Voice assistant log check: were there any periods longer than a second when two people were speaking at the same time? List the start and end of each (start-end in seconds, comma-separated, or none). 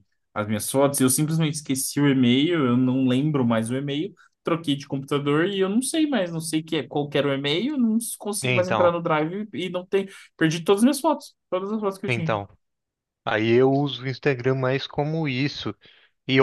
none